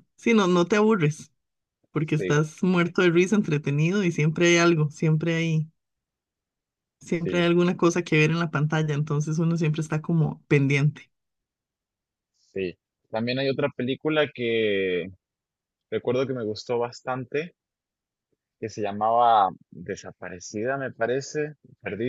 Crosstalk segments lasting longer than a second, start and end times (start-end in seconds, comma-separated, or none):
none